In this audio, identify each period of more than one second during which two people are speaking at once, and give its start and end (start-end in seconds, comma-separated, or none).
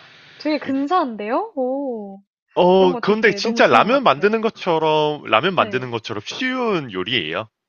2.7-4.3